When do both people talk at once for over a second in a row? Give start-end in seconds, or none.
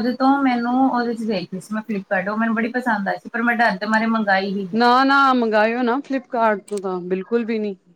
none